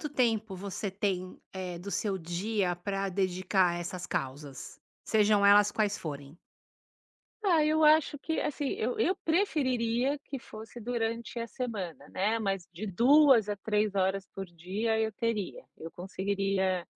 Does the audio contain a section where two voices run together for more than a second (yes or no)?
no